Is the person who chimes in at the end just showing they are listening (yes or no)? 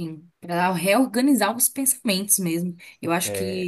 yes